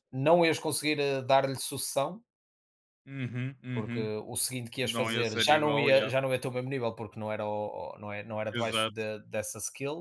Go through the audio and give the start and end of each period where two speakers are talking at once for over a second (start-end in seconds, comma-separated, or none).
4.8-6.1